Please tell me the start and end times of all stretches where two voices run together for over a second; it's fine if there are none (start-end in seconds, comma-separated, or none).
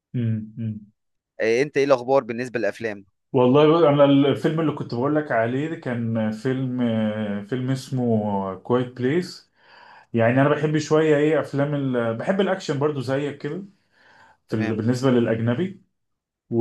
none